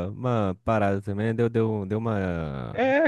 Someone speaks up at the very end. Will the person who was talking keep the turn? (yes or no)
no